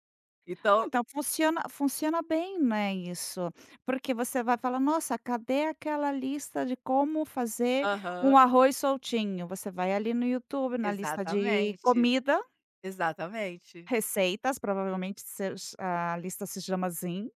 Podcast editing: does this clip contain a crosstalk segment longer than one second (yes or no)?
yes